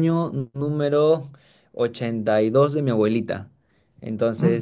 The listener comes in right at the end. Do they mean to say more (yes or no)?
no